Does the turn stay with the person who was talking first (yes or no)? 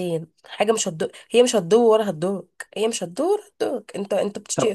yes